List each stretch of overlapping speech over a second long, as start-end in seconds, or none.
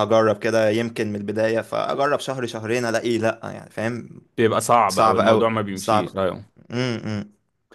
4.9-6.2